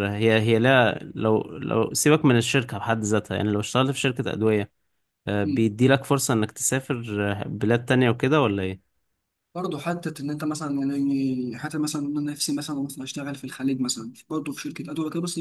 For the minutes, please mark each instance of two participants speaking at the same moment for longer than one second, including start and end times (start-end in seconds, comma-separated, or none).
none